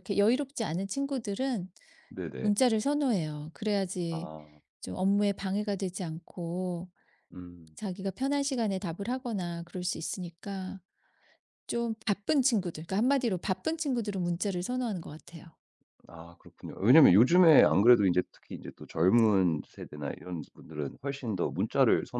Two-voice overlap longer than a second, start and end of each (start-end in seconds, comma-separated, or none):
none